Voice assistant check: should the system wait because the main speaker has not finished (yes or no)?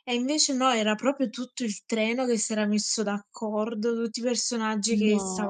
yes